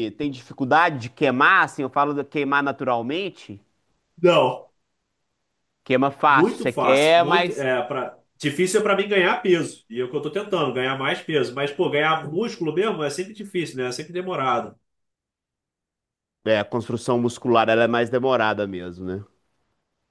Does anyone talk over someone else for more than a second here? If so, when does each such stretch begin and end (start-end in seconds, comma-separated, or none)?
6.3-7.7